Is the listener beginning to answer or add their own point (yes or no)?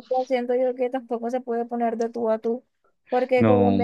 no